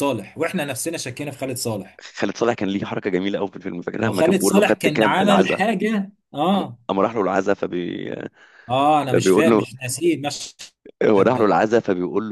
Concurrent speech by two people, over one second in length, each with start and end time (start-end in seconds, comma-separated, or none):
4.0-5.6